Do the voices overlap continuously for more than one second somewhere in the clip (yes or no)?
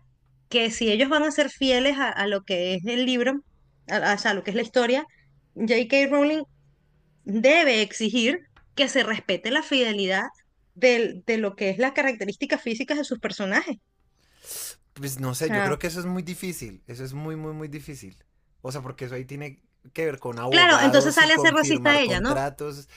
yes